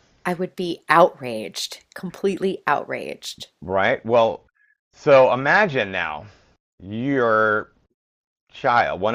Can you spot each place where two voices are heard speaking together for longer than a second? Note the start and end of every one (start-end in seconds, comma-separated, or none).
none